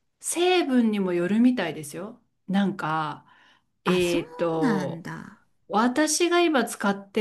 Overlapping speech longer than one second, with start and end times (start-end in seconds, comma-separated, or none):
3.9-5.1